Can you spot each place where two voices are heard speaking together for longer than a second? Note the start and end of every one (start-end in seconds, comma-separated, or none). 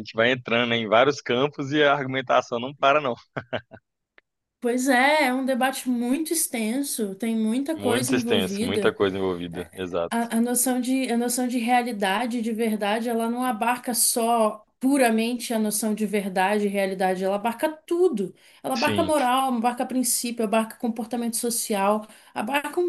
7.8-9.0